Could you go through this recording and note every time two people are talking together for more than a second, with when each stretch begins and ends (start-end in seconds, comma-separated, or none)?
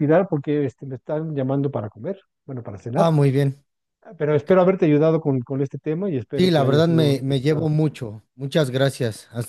6.4-7.7